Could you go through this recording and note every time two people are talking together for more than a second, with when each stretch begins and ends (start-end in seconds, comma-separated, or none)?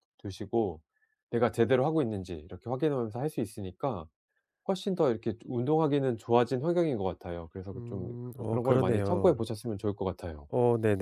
7.7-9.5